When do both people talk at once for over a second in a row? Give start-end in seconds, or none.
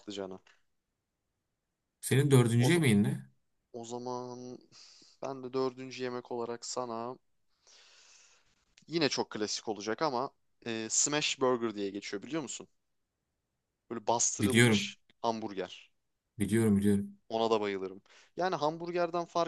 none